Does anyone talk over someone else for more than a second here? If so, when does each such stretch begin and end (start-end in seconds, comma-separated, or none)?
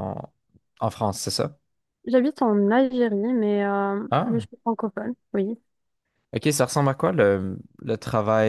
none